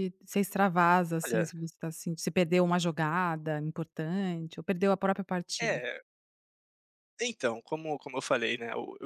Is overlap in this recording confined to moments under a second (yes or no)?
yes